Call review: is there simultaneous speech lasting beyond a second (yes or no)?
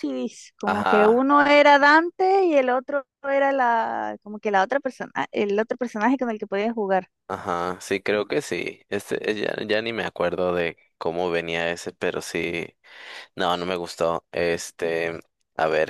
no